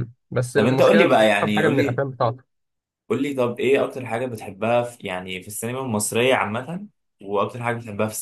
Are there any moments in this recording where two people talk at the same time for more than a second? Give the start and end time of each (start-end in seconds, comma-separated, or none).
0.5-2.0